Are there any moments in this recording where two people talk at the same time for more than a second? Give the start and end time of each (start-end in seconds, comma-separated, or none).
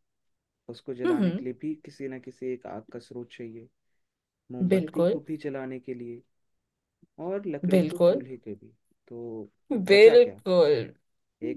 none